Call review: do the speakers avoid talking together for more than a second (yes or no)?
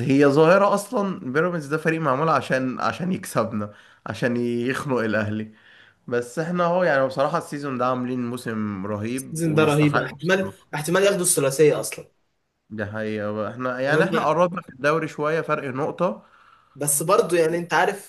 no